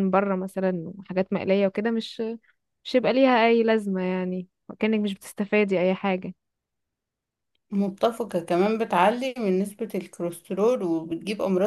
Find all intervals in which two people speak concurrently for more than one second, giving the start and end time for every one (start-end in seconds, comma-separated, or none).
none